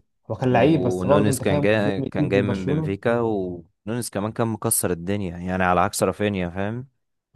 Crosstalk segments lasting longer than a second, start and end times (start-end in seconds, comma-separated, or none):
0.5-3.0